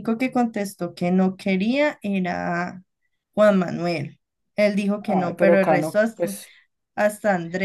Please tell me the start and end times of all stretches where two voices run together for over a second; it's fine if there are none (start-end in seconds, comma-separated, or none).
5.1-6.4